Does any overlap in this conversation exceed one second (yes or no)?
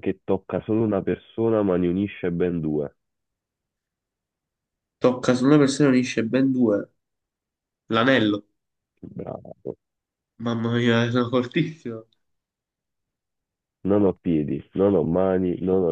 no